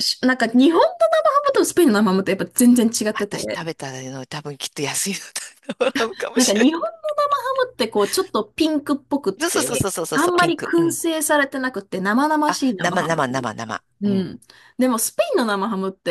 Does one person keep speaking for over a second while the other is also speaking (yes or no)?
yes